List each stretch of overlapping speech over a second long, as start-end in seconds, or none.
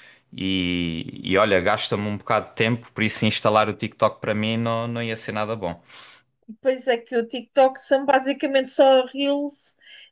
none